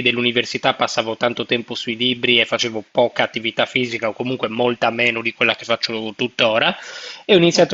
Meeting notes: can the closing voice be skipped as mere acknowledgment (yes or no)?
yes